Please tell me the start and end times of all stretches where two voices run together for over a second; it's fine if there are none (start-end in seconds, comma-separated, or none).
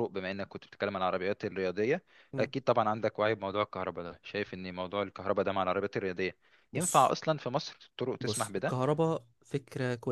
none